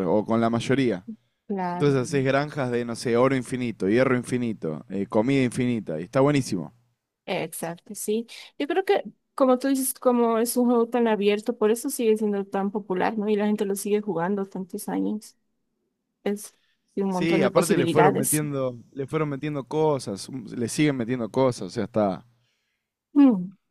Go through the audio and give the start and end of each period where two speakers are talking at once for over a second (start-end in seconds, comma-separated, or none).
17.1-18.4